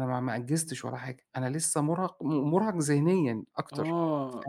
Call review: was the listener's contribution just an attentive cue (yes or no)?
no